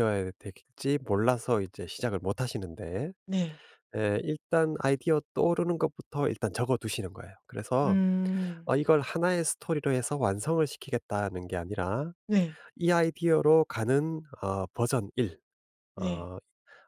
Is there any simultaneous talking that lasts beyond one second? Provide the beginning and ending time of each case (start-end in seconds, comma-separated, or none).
none